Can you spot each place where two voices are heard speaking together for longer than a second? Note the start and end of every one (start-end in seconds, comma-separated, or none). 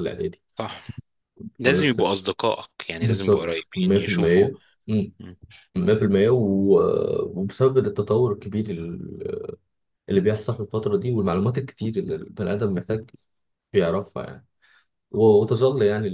3.0-4.5